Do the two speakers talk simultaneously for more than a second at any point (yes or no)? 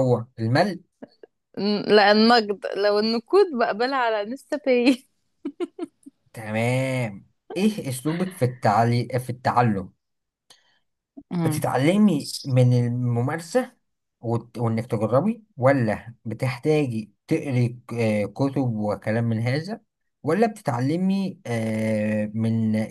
no